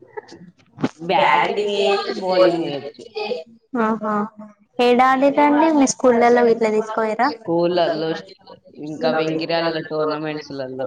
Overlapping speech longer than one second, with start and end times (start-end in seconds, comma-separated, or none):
1.2-3.0